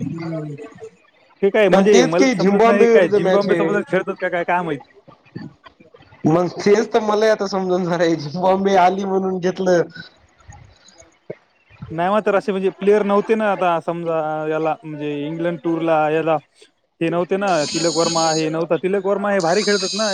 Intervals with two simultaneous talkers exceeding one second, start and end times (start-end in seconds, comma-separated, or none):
1.7-3.7